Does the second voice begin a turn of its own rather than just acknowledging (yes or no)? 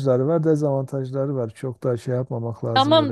yes